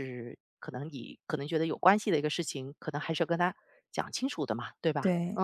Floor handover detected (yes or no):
yes